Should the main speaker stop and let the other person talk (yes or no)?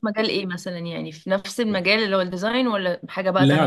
yes